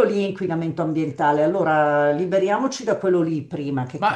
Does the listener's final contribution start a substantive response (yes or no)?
yes